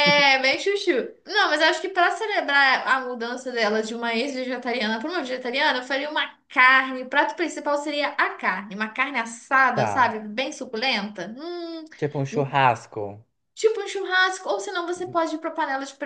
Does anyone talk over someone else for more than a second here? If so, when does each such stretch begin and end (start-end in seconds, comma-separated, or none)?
none